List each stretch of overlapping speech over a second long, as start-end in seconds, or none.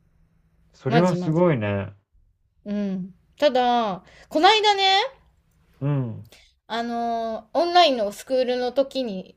none